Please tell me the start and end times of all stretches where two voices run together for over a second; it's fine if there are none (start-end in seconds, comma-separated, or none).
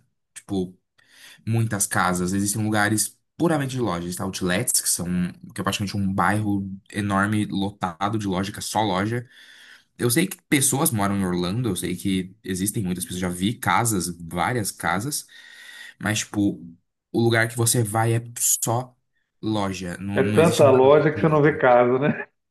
20.1-21.4